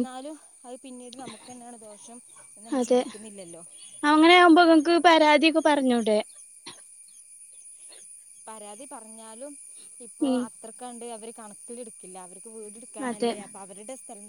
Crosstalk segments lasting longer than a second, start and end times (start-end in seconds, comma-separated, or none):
none